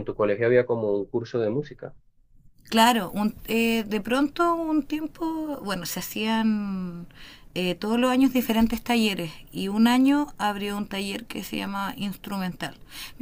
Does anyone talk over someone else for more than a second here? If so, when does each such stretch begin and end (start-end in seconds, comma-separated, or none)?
none